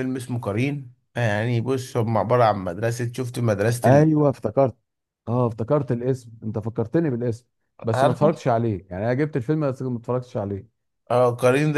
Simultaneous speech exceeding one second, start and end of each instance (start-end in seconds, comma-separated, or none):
none